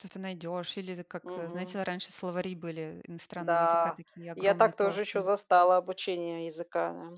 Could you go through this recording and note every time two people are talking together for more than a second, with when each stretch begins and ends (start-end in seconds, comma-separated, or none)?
3.4-5.3